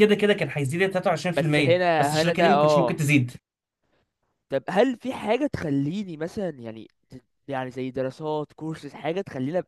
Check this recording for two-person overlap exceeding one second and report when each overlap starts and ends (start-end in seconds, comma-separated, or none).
1.4-3.1